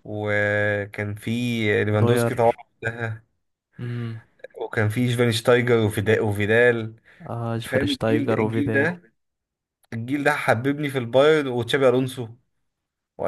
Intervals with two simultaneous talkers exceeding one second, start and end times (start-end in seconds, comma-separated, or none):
7.6-8.9